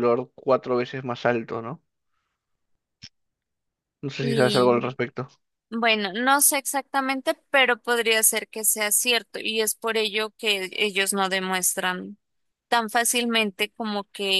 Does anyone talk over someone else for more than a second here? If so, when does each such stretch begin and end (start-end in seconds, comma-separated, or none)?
none